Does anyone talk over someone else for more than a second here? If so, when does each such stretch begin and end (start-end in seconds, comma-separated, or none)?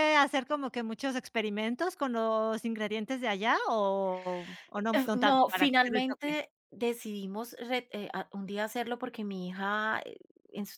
4.9-6.4